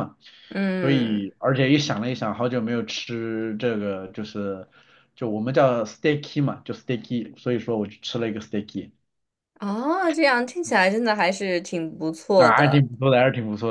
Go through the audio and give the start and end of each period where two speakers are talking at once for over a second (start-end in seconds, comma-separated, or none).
none